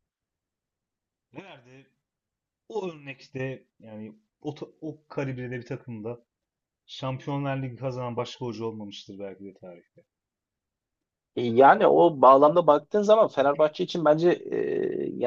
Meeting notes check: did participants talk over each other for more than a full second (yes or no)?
no